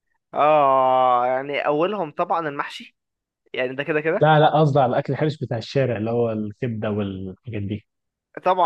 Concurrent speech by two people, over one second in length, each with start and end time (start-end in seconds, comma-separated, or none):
none